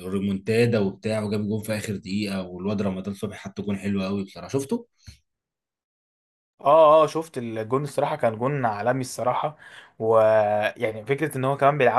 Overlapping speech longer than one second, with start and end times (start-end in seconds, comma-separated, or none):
none